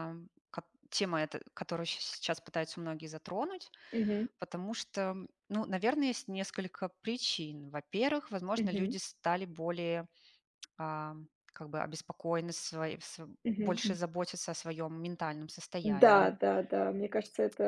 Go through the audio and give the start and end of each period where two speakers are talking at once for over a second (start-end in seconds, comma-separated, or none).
none